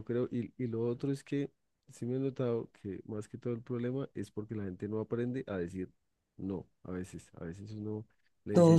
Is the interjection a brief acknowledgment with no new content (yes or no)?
yes